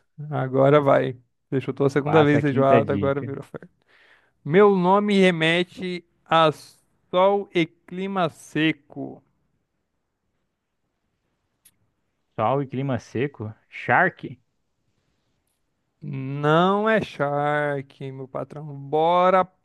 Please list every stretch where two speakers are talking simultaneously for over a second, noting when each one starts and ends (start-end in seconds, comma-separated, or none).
2.0-3.3